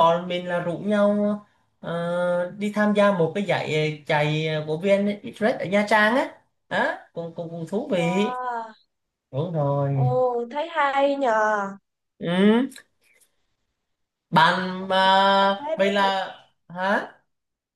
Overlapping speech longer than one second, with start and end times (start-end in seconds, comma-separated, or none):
14.8-16.1